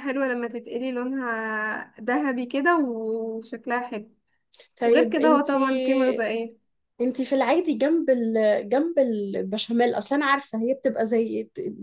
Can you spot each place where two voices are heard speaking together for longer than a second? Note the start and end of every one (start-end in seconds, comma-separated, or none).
4.8-6.3